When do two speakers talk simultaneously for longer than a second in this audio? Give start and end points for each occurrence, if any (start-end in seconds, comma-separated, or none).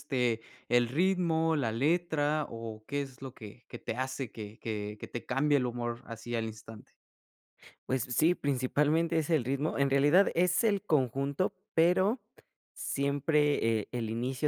none